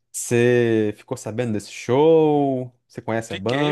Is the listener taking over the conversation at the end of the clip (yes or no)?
yes